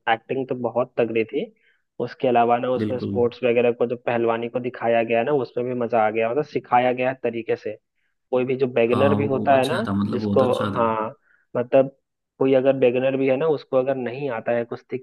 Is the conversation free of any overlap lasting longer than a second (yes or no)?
no